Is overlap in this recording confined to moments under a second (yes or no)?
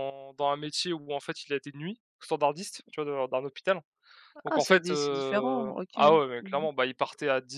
no